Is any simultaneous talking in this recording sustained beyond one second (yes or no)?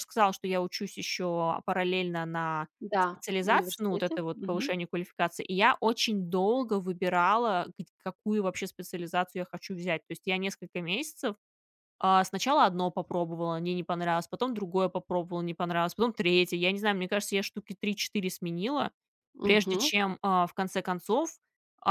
yes